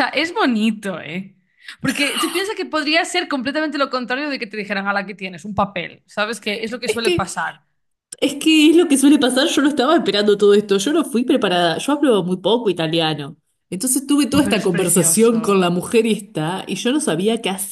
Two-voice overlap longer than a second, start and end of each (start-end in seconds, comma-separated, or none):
14.3-15.7